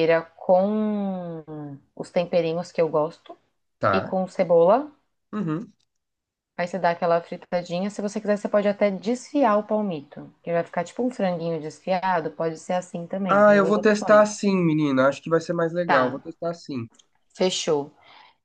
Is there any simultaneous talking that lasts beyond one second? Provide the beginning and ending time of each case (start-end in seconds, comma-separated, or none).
13.3-14.5